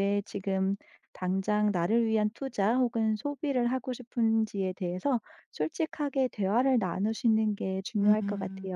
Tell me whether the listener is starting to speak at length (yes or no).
yes